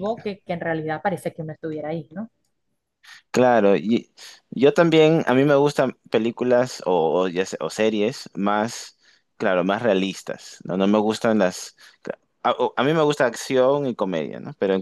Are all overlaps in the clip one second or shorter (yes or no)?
yes